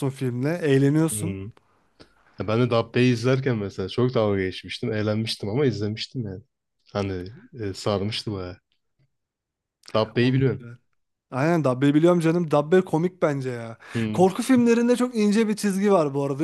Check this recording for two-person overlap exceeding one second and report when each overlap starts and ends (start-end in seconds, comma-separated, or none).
none